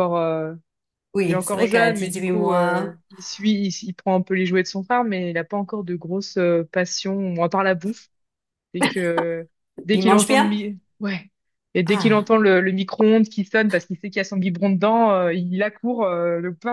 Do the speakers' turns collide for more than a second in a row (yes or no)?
yes